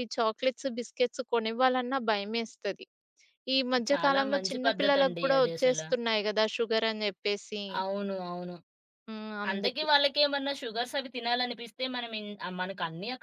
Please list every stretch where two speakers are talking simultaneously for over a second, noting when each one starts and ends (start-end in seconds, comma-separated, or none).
3.9-5.8